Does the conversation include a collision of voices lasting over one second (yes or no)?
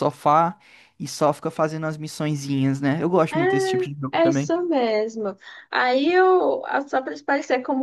yes